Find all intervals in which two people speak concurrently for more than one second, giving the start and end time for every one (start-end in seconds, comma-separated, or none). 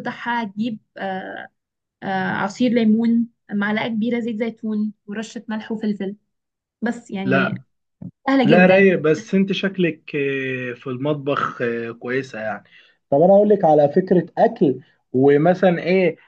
none